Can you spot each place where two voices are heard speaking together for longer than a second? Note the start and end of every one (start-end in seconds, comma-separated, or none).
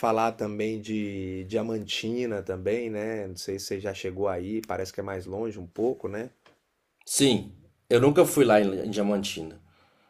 none